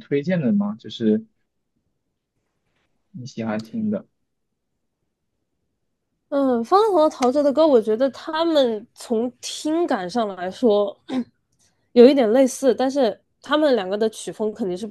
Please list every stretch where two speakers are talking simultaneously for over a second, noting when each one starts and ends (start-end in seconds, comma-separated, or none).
none